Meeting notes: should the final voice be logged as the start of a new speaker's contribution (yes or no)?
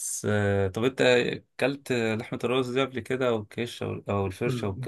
yes